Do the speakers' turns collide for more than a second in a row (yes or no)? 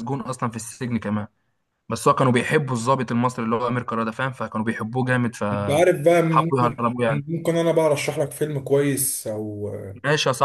yes